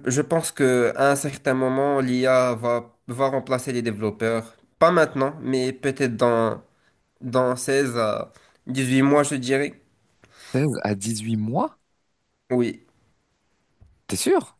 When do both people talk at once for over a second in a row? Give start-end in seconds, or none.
none